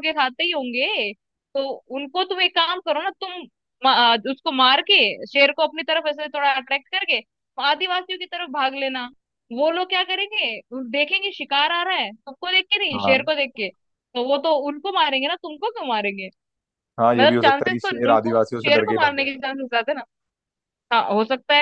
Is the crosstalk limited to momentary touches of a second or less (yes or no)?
no